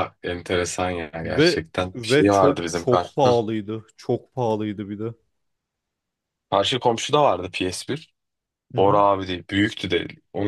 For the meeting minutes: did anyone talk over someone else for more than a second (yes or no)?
yes